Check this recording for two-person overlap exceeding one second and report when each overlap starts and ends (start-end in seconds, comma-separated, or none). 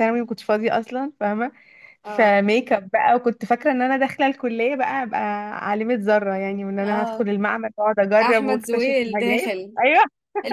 8.2-9.8